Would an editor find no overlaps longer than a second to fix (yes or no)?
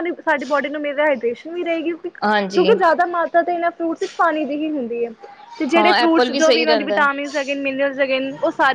no